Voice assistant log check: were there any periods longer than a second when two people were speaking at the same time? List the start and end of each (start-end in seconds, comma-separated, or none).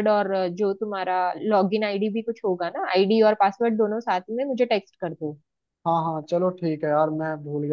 none